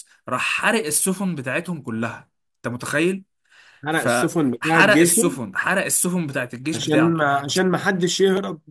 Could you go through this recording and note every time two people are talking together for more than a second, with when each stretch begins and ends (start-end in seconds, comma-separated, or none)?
3.9-5.3